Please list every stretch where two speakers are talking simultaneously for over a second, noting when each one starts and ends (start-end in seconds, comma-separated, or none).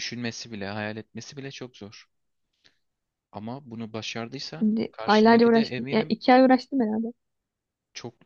4.6-6.1